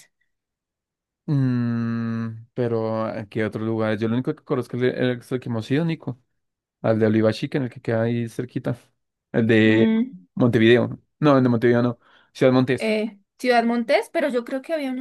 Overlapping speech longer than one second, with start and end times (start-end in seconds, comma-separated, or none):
none